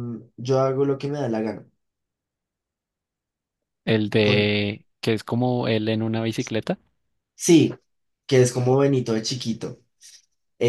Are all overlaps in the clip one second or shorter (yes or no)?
yes